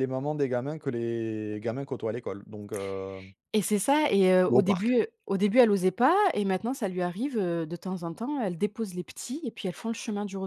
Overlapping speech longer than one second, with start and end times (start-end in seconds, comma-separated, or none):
none